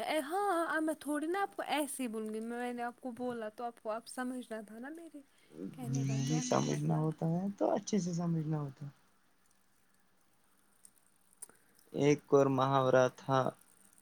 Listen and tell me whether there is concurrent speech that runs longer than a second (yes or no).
no